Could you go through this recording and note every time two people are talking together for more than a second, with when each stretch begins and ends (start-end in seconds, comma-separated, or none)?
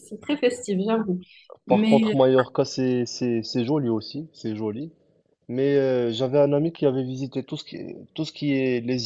none